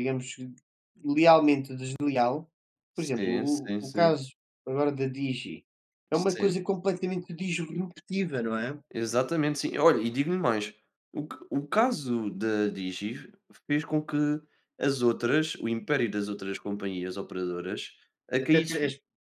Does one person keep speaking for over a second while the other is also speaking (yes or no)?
yes